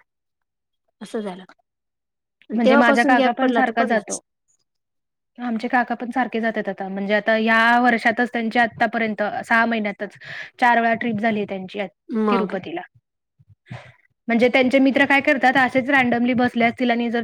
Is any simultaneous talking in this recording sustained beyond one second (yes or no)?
yes